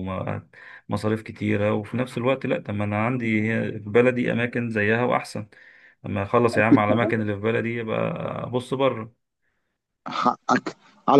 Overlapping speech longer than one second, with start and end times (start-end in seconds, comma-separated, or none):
none